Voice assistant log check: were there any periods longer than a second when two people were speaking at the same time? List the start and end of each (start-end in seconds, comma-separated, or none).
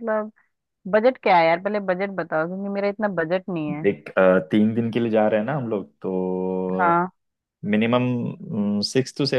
none